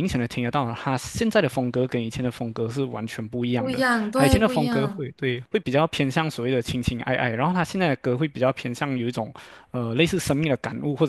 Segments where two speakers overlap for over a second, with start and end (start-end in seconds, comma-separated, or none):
3.6-5.1